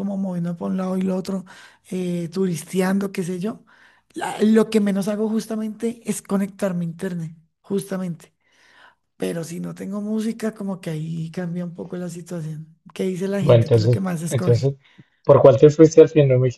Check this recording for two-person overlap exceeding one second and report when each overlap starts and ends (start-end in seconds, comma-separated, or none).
13.4-14.7